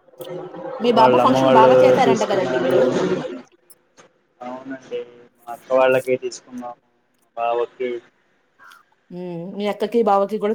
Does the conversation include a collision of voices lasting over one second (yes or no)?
yes